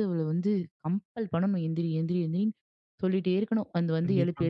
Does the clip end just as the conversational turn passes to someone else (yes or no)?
yes